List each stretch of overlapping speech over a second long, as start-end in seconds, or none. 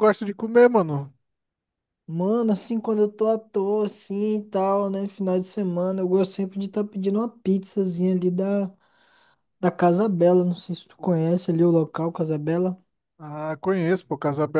none